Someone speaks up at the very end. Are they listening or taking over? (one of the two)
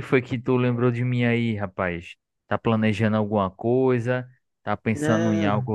listening